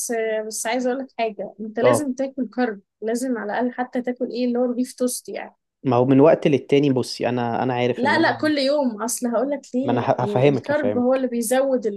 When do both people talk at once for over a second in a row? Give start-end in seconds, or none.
9.8-11.3